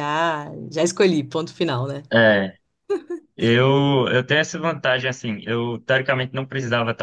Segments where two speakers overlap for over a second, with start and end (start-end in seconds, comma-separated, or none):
none